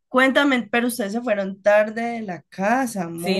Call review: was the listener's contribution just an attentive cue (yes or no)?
no